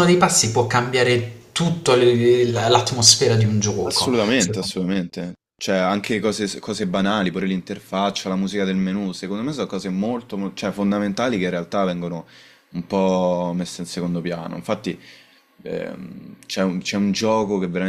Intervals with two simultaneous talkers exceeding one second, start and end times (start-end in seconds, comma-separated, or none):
none